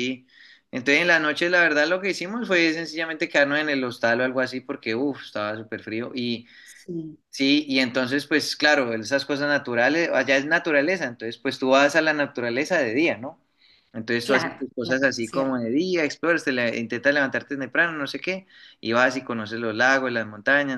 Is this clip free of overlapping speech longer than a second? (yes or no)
no